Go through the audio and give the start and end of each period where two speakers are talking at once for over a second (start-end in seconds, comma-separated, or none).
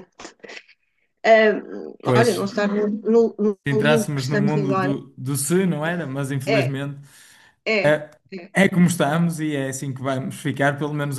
3.6-5.0